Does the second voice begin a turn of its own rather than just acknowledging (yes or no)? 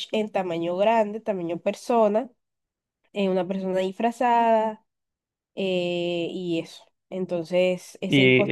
yes